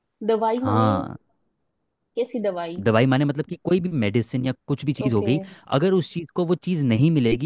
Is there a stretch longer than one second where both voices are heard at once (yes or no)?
no